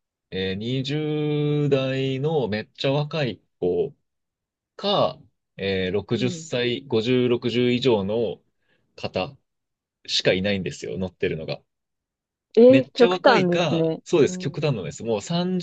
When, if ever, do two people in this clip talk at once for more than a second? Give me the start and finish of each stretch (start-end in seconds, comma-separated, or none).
12.7-14.6